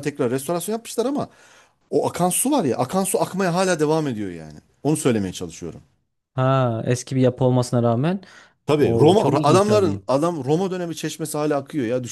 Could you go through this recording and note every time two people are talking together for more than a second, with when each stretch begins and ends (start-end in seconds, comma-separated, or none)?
8.7-10.0